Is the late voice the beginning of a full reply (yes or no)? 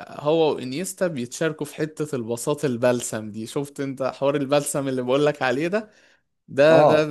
no